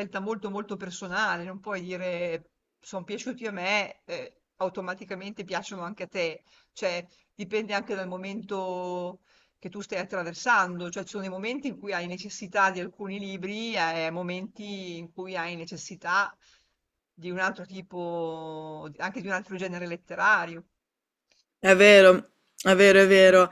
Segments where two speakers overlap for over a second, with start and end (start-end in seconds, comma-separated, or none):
none